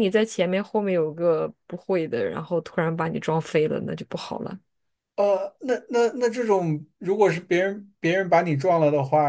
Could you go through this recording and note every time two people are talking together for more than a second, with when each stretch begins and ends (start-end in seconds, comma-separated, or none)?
none